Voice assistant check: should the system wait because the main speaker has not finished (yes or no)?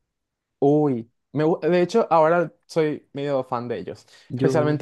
yes